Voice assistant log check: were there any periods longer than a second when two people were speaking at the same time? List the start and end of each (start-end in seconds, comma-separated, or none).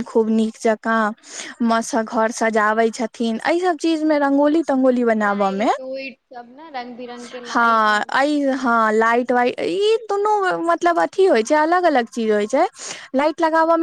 7.5-9.2